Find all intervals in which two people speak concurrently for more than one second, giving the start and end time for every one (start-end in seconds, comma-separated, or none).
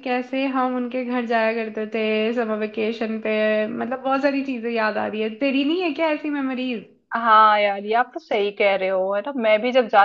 none